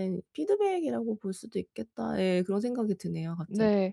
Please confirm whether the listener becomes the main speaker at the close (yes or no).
yes